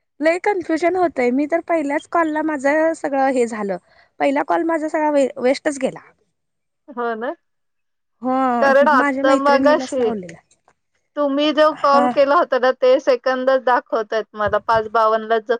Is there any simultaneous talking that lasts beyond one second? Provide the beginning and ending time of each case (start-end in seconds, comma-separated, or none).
8.6-10.1